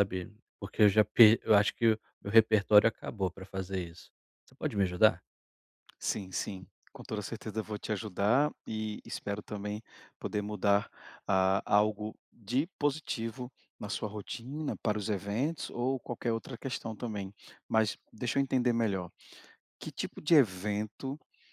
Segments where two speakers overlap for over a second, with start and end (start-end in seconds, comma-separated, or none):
none